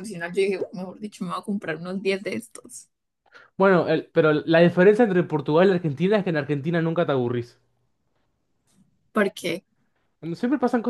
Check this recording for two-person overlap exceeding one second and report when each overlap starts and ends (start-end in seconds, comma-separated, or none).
none